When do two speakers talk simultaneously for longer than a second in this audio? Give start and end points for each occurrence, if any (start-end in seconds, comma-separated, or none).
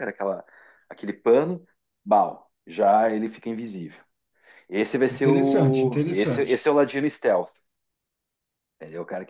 5.1-6.7